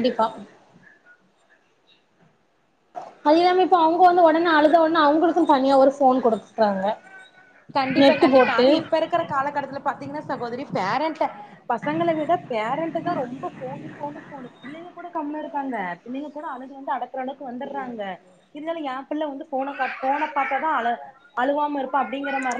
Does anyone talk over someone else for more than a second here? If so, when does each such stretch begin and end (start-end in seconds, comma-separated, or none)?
none